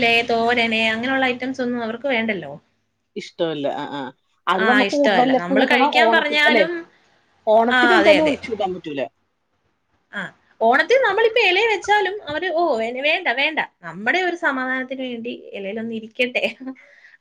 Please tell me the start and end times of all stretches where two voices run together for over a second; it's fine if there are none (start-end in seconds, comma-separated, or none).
4.6-6.6